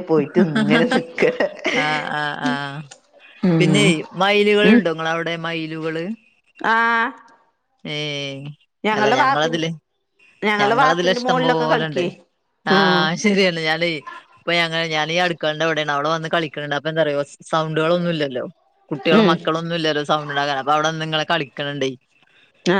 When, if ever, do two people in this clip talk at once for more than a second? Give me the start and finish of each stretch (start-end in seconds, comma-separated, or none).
10.6-12.0